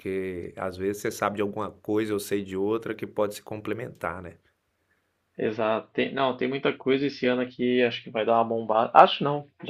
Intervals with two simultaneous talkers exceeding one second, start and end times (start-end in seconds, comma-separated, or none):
none